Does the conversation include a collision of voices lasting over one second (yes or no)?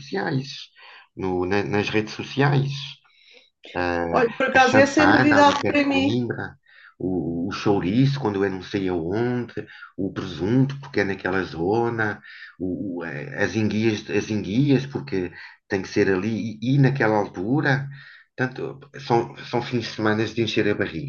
yes